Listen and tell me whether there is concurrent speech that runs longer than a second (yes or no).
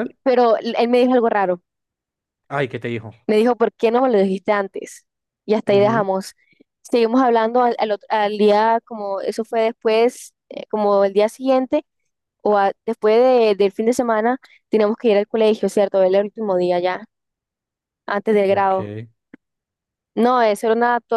no